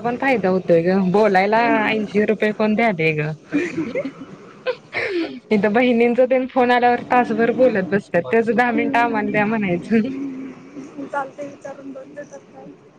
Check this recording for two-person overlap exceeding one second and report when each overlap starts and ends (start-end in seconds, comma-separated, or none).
8.7-10.1